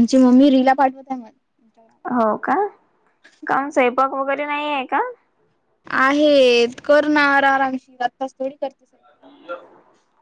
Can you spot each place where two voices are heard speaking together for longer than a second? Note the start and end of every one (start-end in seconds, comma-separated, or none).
none